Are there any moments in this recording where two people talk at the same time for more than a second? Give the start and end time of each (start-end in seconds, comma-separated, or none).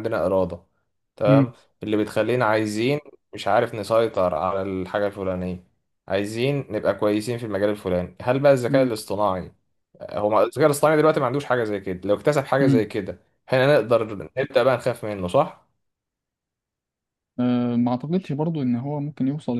none